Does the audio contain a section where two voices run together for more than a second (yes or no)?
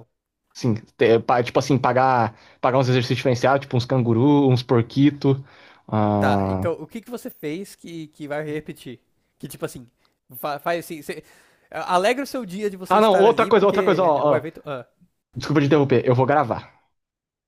yes